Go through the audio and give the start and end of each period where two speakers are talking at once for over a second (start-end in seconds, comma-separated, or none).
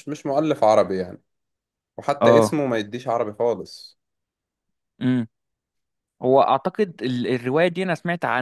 none